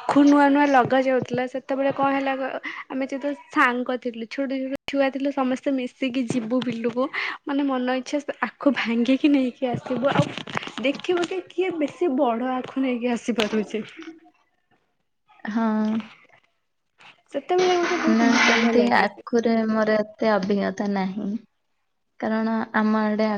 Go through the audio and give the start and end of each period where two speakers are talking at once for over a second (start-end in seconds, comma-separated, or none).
18.1-19.6